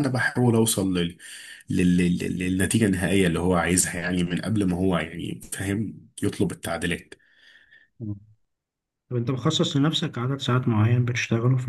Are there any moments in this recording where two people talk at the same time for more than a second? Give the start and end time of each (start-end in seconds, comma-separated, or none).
none